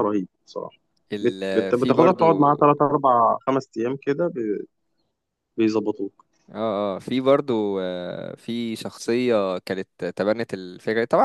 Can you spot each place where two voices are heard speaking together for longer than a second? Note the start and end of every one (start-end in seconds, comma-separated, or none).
1.2-2.5